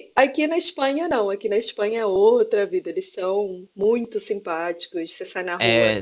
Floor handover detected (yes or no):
yes